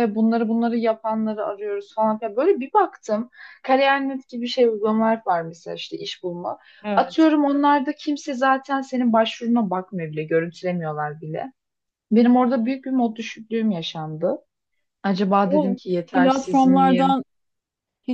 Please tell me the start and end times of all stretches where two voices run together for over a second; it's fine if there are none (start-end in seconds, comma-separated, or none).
15.5-17.2